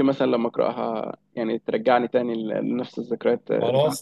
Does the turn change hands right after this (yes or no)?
yes